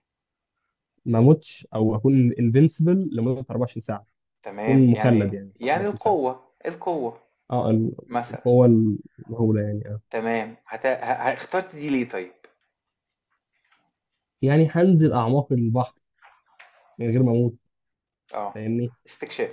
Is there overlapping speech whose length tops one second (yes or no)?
yes